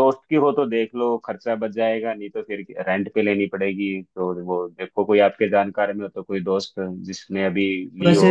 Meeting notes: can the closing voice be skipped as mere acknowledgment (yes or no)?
no